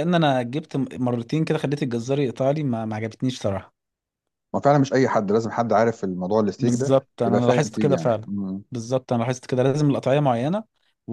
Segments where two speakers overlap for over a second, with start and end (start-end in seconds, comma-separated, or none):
6.6-8.3